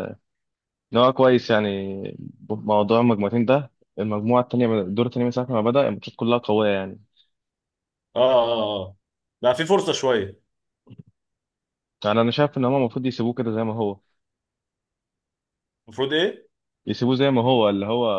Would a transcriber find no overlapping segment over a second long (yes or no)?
yes